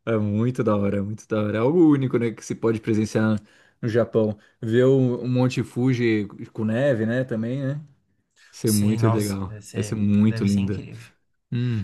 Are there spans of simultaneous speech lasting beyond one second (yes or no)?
yes